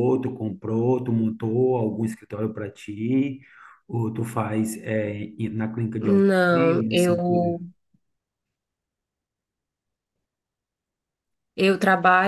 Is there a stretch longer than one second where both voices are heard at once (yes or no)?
yes